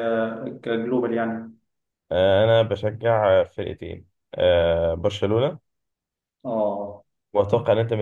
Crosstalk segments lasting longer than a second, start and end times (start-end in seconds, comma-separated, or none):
none